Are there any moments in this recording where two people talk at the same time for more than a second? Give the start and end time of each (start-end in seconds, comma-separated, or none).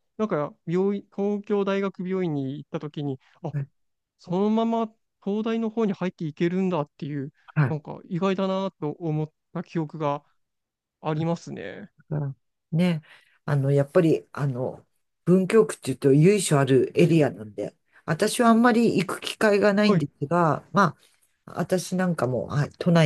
none